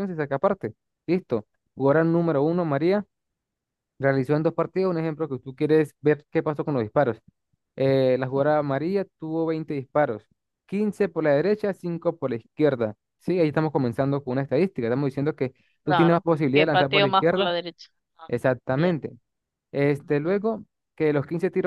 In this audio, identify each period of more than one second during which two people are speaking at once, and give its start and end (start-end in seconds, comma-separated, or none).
15.9-17.6